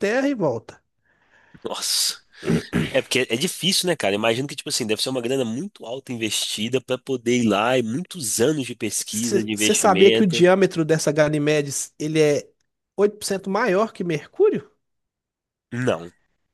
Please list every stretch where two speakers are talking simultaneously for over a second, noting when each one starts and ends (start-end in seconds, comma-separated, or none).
9.1-10.4